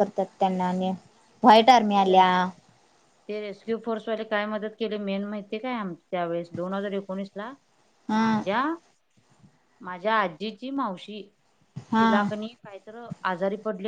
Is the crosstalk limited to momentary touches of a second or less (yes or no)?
yes